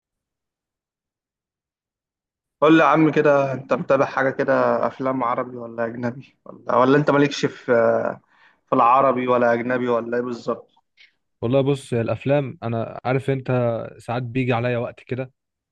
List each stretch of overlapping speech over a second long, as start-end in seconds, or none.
none